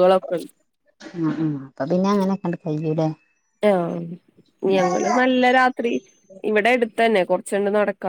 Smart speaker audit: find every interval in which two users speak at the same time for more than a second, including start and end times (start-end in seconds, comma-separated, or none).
none